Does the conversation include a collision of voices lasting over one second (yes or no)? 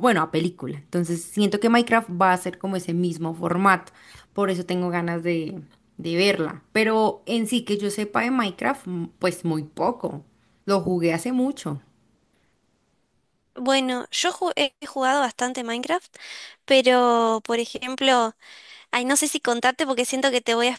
no